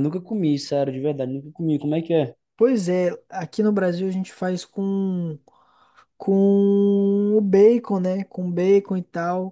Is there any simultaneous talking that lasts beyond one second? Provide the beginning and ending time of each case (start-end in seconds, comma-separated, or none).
none